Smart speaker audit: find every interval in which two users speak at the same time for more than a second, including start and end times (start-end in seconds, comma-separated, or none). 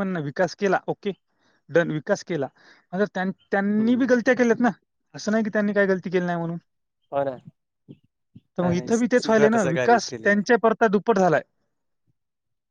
8.6-10.4